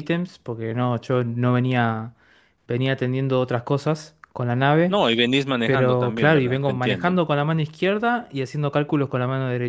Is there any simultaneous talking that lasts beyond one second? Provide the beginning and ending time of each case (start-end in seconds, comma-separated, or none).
5.6-7.1